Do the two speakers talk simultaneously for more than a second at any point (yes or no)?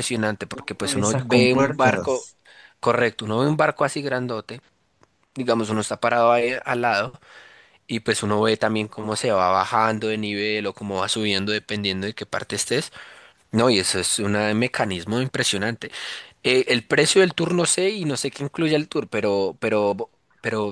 yes